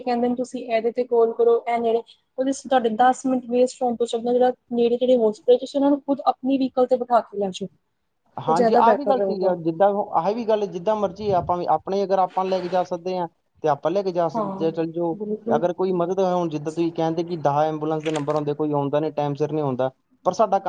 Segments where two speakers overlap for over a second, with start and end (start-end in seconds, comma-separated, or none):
none